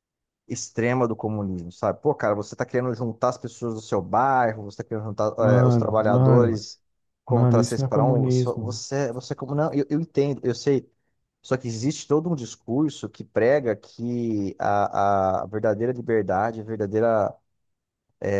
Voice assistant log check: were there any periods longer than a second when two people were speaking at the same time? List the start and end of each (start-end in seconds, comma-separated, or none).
5.4-6.6, 7.3-8.8